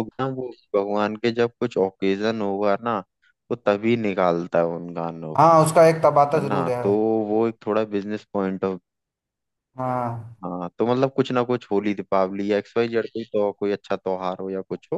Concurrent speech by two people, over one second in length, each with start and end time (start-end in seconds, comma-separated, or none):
none